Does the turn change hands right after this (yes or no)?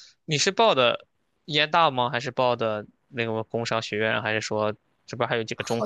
yes